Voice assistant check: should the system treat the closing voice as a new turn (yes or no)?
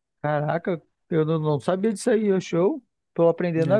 no